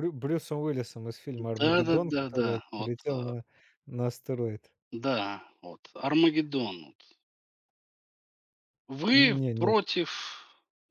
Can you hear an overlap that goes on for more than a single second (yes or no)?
yes